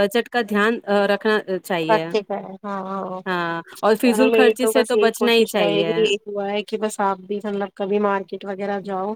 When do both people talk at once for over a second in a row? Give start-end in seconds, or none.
4.0-5.9